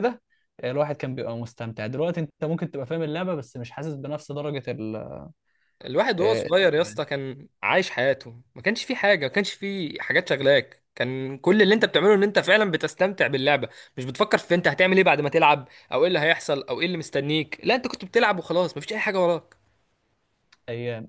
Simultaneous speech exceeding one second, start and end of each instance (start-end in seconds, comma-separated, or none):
none